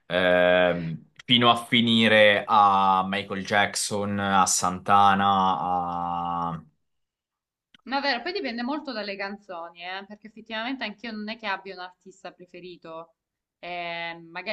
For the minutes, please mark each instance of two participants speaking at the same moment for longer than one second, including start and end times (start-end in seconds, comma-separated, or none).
none